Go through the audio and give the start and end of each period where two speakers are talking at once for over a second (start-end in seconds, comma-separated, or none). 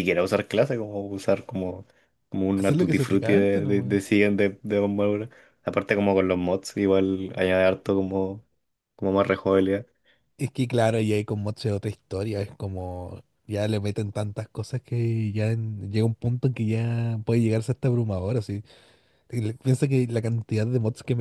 2.5-4.0